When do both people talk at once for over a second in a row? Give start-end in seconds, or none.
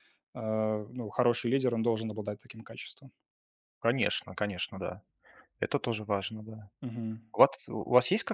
none